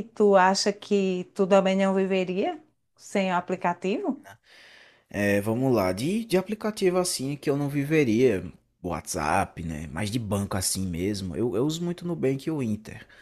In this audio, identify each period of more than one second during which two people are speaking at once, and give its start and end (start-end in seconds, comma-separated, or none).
none